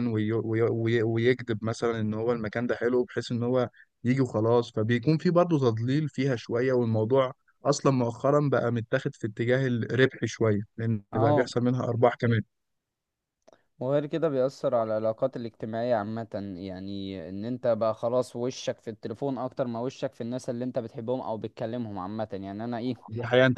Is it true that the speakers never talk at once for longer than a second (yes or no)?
yes